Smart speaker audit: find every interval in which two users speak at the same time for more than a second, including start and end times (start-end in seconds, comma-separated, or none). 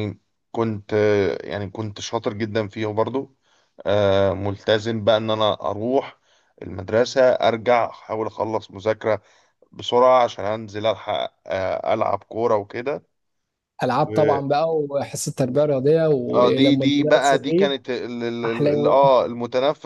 16.3-17.7